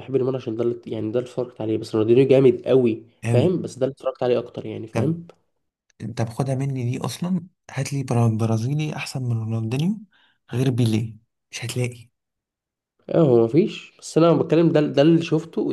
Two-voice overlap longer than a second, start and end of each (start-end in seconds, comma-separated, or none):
none